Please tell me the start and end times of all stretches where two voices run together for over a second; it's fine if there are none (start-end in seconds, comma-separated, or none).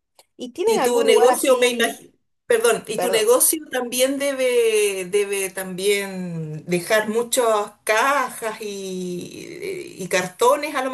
0.6-2.0